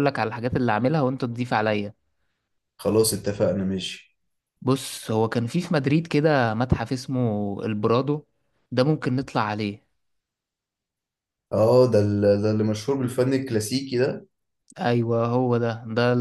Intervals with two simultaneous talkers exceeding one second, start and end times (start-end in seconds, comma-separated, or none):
none